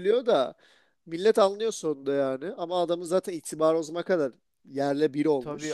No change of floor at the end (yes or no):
no